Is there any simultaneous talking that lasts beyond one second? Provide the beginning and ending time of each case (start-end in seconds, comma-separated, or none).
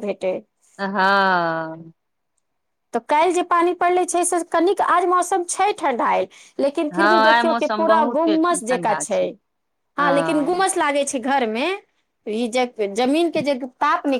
7.0-9.0